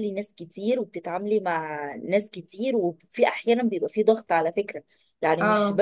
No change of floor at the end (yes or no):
yes